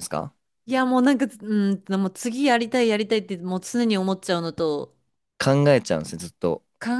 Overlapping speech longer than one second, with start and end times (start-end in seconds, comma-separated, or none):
none